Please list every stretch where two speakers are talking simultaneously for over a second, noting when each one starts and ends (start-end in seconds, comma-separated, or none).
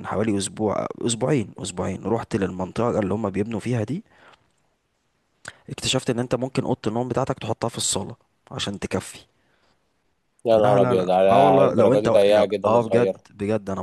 10.6-13.2